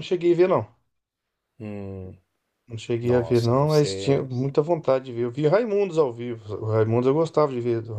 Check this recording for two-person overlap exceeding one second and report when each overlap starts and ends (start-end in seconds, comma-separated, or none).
3.0-4.3